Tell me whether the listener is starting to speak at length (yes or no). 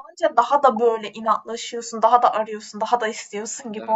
yes